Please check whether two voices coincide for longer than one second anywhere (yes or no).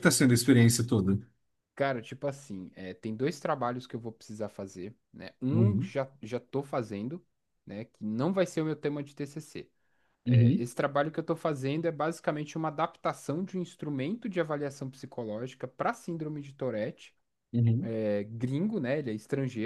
no